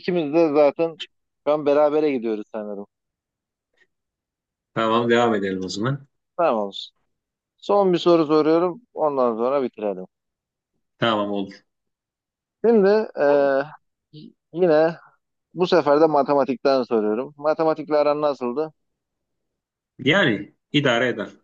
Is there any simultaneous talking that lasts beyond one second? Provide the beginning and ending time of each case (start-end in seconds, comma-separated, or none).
none